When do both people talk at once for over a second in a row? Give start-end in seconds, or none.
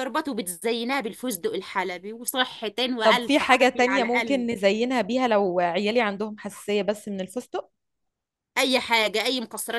3.0-4.5